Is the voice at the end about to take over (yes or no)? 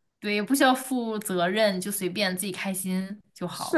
yes